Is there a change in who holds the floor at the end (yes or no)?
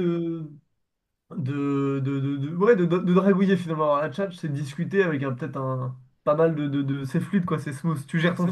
yes